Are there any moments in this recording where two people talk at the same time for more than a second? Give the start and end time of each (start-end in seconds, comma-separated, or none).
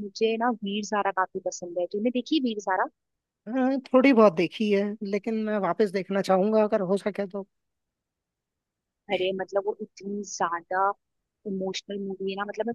none